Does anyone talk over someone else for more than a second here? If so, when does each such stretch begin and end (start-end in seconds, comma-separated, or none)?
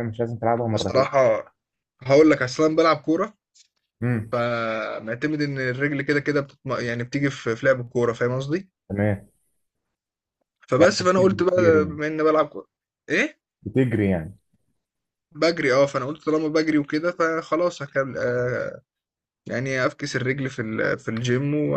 10.8-12.0